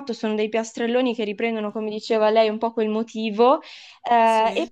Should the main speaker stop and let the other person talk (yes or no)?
no